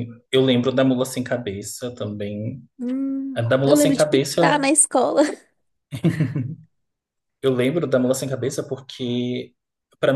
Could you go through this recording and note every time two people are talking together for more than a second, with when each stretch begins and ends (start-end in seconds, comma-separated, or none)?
3.3-4.7